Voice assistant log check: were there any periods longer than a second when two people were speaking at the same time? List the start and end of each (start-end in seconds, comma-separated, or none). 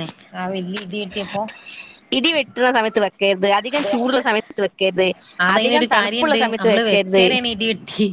5.5-7.2